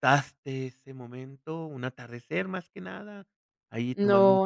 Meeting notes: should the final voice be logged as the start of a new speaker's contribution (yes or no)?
yes